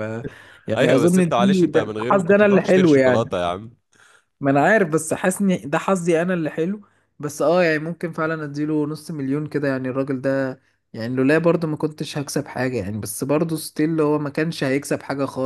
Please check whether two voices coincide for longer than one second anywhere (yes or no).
yes